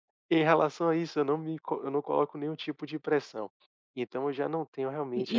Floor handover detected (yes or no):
yes